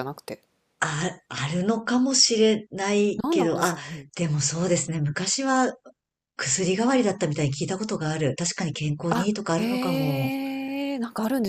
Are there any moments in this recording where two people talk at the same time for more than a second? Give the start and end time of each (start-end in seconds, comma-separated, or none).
9.1-10.3